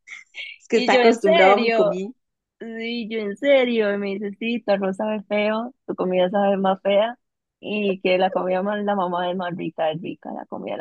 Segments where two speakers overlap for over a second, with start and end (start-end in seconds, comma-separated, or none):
0.7-2.0